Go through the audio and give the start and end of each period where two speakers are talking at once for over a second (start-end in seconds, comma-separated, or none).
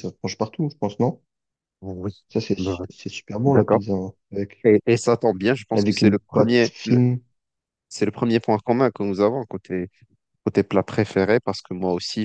5.7-7.0